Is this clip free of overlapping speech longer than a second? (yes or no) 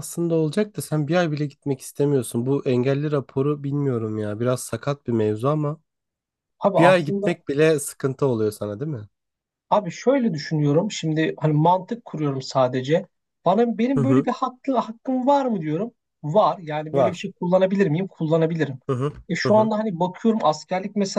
yes